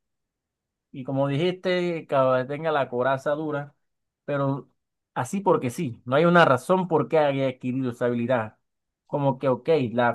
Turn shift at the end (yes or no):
no